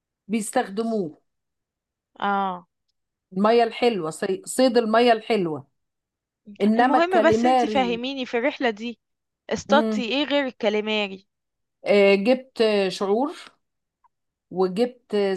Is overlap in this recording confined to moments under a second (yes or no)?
no